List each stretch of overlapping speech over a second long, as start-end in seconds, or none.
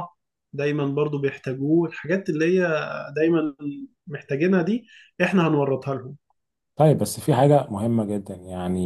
none